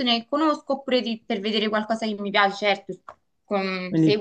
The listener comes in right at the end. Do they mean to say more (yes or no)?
no